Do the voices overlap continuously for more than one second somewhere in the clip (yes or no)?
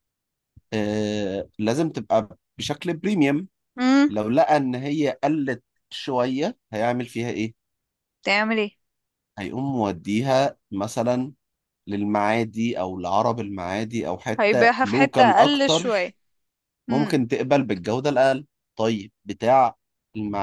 yes